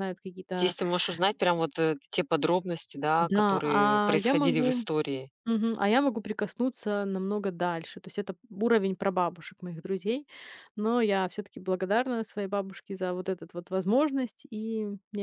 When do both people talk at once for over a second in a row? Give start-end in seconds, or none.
3.2-4.8